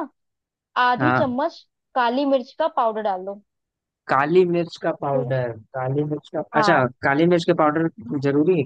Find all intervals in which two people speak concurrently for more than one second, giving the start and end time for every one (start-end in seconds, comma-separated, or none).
none